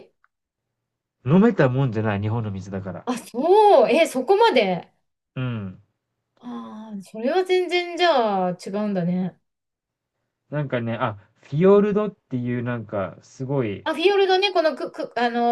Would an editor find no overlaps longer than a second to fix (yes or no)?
yes